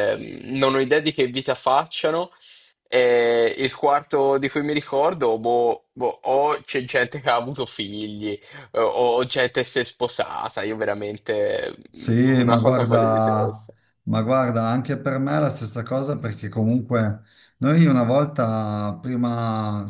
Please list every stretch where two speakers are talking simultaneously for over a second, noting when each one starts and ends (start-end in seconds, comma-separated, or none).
12.4-13.7